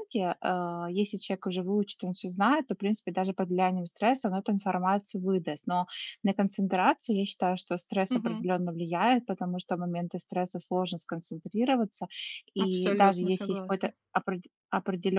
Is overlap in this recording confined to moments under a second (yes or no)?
no